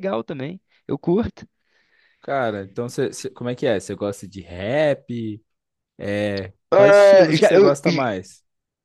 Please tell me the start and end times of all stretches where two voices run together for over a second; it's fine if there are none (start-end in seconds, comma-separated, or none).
6.7-8.1